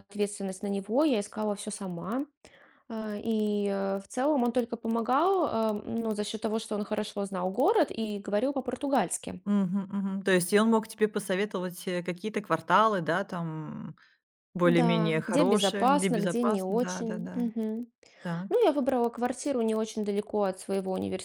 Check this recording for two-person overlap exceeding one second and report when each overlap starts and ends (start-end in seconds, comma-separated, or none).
14.6-17.5